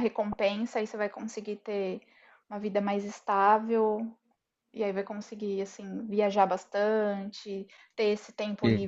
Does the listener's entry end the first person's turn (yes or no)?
no